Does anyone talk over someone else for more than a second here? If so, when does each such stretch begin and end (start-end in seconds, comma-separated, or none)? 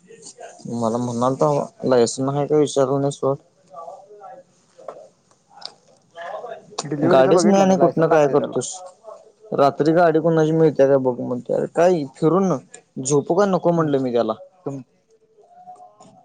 7.1-8.6